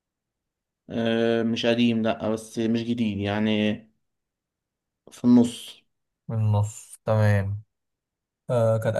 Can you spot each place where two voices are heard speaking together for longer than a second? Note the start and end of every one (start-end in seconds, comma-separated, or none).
none